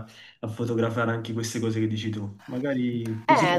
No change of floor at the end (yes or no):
no